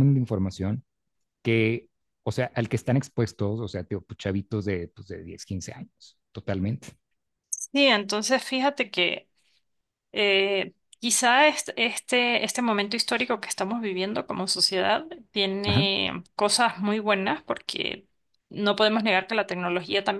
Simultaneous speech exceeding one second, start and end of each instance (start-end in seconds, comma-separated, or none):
none